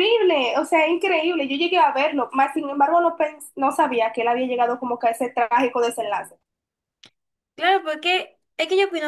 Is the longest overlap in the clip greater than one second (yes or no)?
no